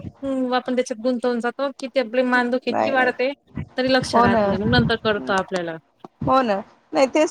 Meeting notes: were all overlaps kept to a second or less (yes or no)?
yes